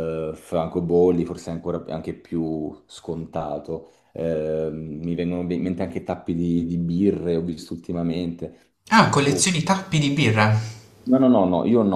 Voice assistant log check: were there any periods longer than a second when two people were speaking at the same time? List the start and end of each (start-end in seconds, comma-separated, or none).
none